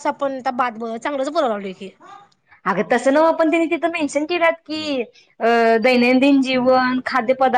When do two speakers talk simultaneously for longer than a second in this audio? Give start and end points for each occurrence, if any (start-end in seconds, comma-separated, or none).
none